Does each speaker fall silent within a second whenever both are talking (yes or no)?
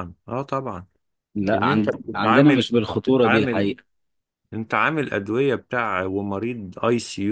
no